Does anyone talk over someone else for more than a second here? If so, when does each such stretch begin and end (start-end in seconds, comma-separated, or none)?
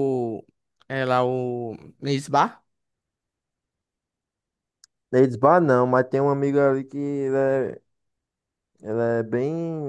none